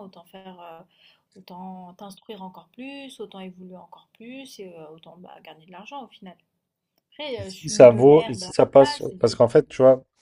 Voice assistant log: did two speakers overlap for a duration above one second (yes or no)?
yes